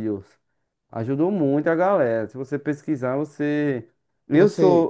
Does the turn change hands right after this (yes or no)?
no